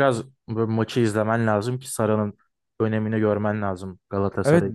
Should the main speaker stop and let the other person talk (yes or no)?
yes